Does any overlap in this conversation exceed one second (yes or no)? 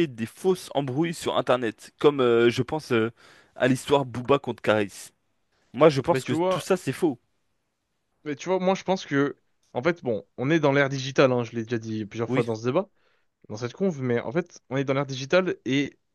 no